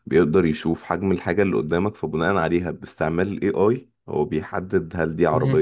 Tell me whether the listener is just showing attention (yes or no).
yes